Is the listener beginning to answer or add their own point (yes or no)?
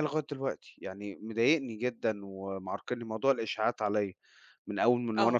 no